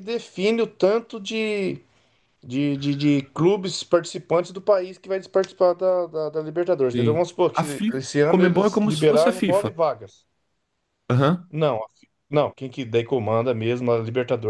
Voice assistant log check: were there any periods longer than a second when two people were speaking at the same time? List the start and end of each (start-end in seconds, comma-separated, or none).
6.9-9.7